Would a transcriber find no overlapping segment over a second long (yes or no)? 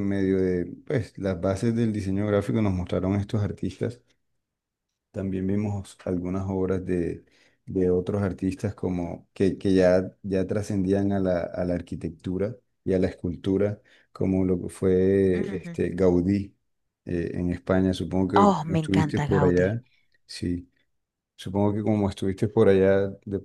no